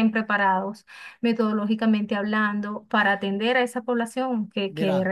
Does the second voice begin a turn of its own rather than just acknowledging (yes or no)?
yes